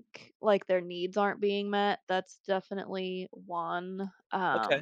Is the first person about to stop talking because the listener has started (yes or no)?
yes